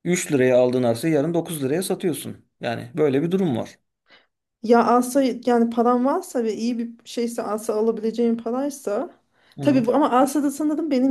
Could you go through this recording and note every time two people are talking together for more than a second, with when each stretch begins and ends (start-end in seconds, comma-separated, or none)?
none